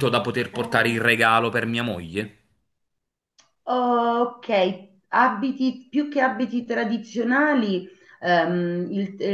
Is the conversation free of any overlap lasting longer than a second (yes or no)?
yes